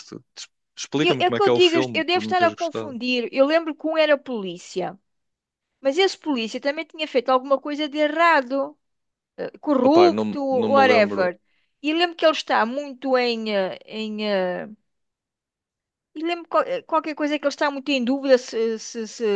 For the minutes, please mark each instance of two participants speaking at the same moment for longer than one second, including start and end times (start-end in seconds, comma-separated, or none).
1.0-3.0, 9.8-11.3